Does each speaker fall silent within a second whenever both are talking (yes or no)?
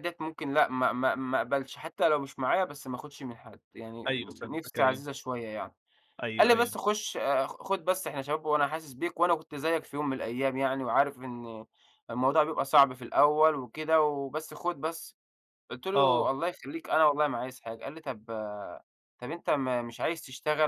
yes